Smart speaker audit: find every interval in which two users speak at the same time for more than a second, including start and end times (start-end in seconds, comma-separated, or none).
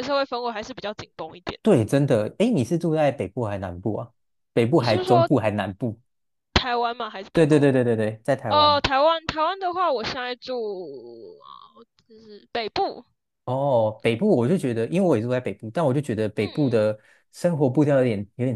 none